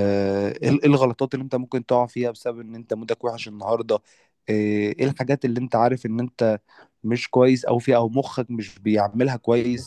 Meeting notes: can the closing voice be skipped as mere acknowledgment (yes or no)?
yes